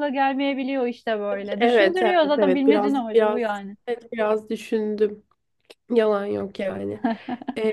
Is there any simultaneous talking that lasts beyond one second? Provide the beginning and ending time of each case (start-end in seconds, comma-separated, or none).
1.6-3.8